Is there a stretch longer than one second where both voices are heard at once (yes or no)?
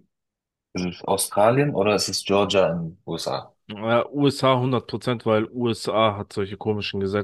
no